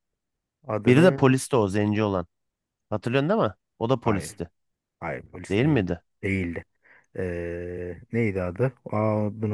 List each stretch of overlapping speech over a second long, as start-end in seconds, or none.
none